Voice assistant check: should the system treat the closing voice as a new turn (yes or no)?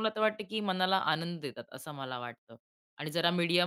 no